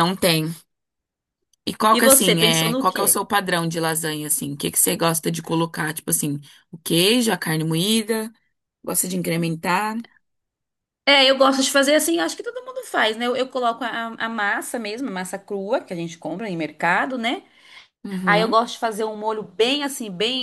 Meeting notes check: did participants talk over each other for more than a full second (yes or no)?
yes